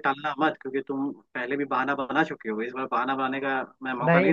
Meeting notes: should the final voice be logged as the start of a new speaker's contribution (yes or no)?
yes